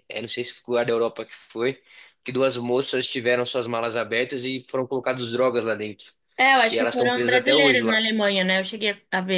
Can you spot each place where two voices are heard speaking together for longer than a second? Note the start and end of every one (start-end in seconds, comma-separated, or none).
6.7-8.0